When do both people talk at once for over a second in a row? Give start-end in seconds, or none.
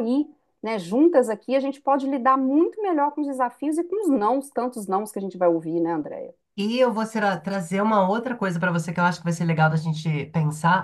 none